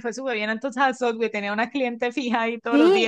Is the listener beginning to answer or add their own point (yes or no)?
yes